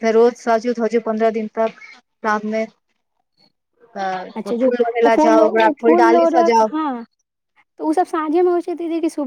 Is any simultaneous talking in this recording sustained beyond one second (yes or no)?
yes